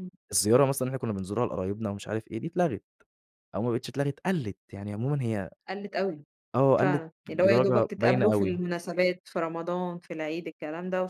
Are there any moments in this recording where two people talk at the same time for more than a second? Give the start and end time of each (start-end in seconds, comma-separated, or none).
6.8-8.6